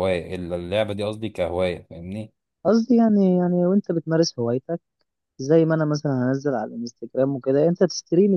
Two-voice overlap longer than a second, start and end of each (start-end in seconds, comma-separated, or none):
none